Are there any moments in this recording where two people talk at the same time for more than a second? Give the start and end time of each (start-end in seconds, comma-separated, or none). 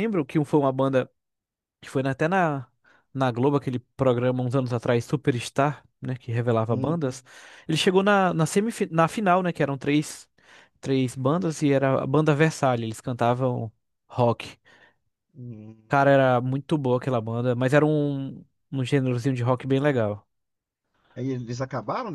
none